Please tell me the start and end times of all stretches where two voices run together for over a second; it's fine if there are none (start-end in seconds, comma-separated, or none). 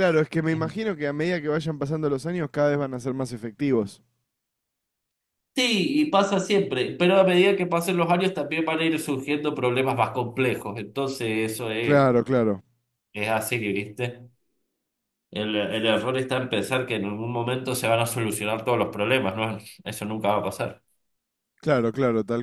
none